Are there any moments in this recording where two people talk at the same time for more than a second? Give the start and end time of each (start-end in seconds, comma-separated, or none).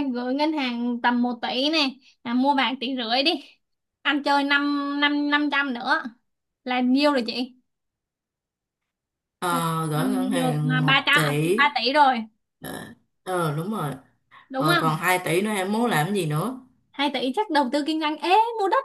9.5-11.6